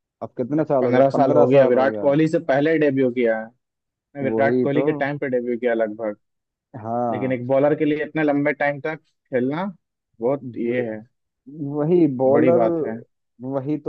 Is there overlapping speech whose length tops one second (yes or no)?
yes